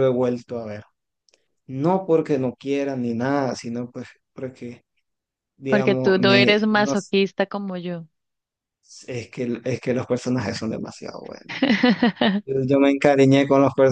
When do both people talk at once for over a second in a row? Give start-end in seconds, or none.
5.7-7.1